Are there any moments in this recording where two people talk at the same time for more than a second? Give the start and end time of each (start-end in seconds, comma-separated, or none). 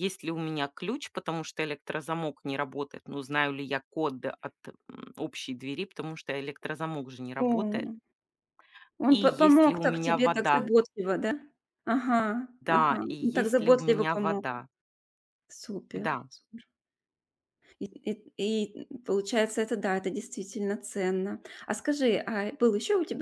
9.1-10.7, 12.6-14.4